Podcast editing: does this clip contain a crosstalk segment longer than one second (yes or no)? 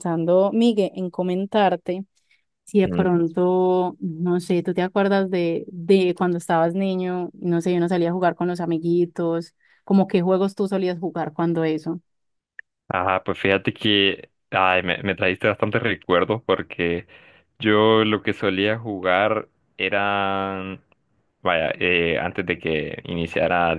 no